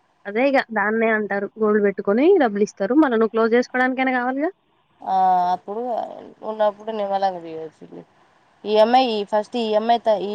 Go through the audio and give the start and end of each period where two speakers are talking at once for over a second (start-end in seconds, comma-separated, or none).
none